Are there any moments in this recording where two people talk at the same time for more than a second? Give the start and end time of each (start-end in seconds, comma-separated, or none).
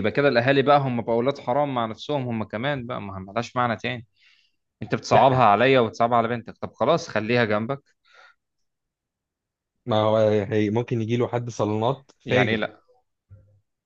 none